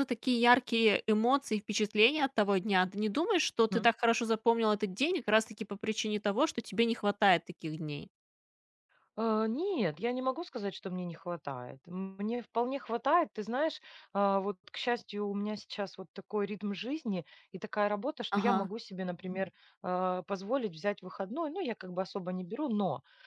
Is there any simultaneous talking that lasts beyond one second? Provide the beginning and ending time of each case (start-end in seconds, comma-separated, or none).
none